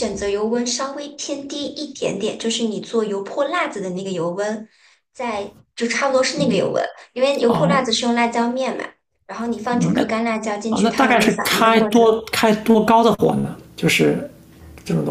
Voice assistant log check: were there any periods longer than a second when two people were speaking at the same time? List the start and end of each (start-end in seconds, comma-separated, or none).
10.7-12.1